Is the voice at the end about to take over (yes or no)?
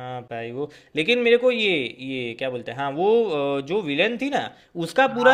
no